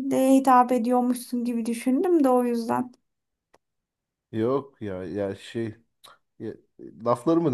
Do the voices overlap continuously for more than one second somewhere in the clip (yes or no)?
no